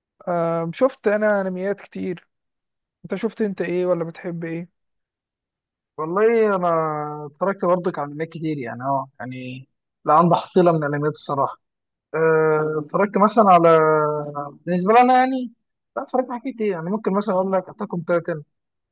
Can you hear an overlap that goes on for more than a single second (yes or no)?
no